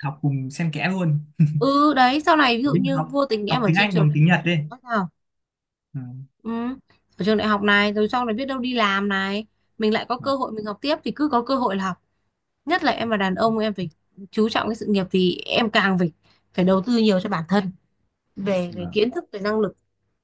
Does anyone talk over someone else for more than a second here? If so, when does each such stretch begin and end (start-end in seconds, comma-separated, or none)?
2.6-4.2